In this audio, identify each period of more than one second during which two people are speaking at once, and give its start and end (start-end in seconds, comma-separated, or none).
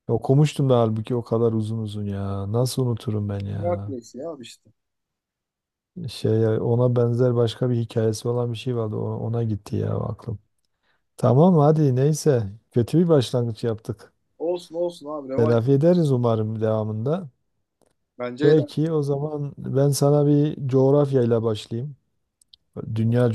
none